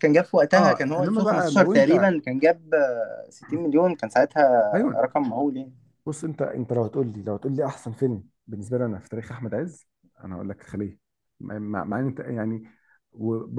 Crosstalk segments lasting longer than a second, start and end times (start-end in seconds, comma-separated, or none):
0.6-2.1